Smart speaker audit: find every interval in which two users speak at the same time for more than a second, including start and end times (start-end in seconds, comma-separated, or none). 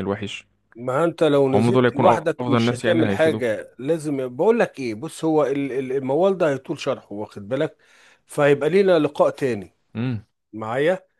1.5-3.5